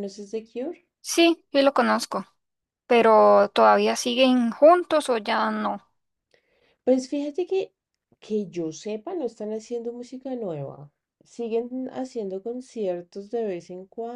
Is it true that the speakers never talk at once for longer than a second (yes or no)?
yes